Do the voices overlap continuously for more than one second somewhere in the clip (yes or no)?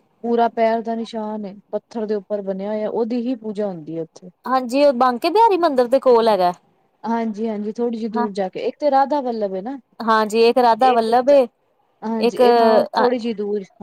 no